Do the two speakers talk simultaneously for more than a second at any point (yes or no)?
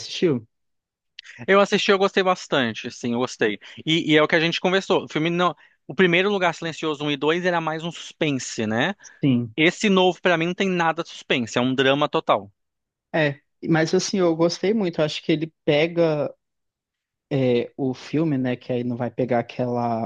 no